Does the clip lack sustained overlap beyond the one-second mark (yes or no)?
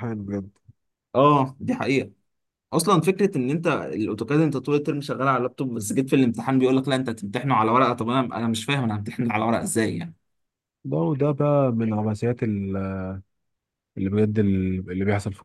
yes